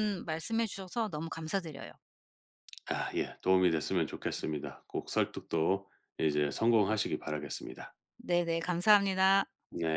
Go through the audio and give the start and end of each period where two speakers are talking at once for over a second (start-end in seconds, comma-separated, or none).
none